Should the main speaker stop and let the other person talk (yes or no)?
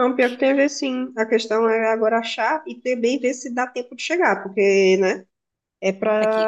no